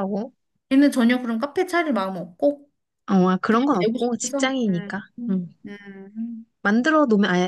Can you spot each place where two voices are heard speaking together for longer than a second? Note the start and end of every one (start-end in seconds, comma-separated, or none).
3.5-5.5